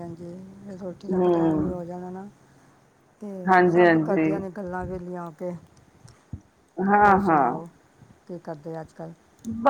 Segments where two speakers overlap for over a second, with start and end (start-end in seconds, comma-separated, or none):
none